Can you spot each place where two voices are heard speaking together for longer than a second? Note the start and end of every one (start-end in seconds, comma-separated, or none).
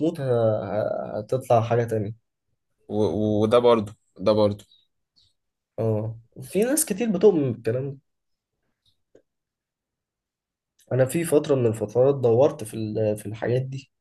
none